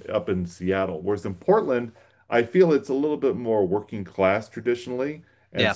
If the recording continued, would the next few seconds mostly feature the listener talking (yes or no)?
no